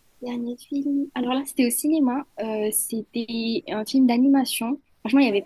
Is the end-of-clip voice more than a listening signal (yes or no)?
no